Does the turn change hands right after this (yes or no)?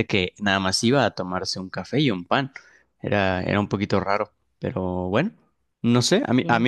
no